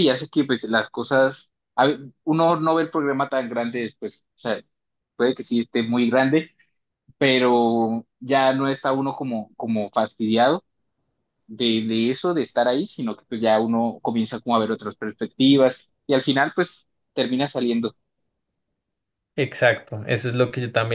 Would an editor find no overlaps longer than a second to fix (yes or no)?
yes